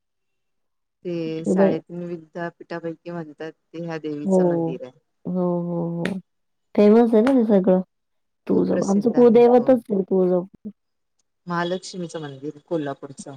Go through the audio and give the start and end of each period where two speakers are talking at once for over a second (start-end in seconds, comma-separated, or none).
8.5-9.7